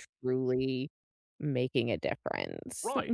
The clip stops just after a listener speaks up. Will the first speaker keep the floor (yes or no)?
no